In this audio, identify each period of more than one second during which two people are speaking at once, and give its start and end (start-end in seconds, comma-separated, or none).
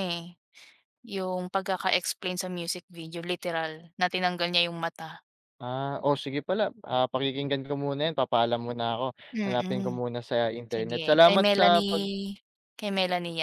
10.7-12.0